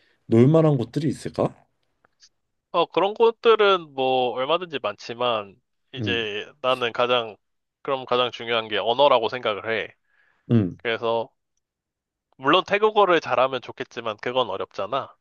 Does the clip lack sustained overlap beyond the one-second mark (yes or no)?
yes